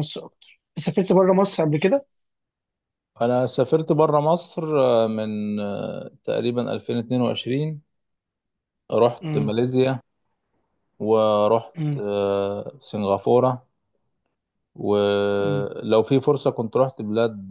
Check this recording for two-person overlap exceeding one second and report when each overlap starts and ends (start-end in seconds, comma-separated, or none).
none